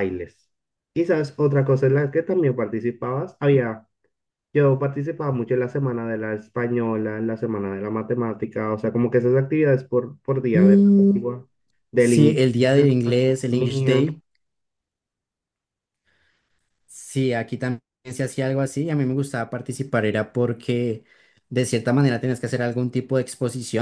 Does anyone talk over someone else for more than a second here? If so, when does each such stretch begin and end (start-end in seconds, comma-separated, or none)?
12.0-14.1